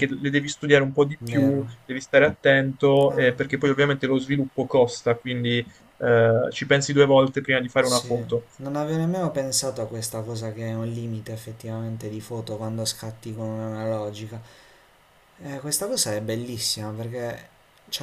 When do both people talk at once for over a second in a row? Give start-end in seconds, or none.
none